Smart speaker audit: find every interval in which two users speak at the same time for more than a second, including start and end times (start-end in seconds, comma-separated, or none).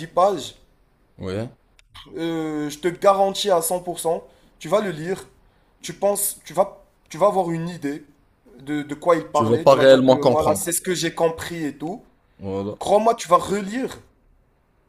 9.3-10.7